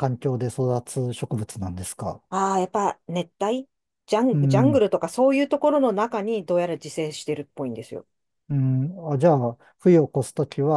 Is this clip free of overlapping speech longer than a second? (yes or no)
yes